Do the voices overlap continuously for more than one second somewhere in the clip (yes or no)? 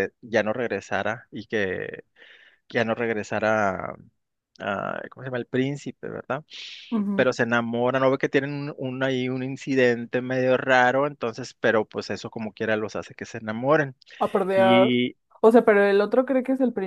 no